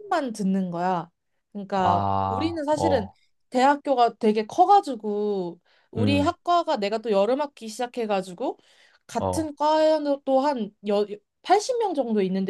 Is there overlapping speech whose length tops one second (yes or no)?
yes